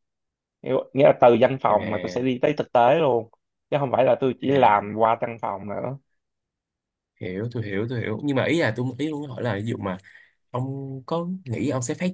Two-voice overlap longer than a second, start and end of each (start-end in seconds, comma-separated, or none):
none